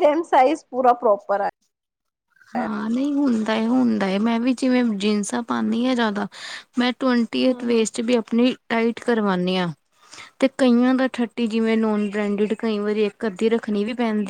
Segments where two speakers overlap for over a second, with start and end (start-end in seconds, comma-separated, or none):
none